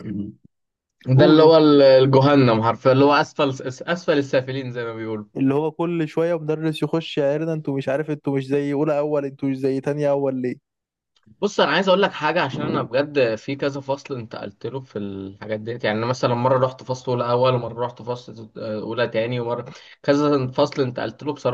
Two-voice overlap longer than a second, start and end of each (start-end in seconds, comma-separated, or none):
none